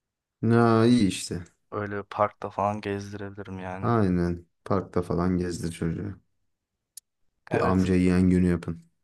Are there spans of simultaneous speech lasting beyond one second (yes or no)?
no